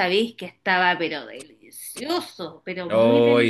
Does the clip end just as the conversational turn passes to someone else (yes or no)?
yes